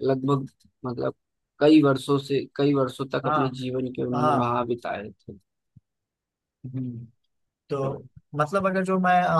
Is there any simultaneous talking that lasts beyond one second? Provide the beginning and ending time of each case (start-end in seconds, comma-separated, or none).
none